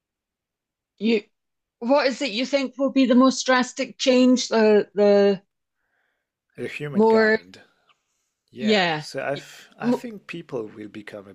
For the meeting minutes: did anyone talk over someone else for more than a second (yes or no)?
no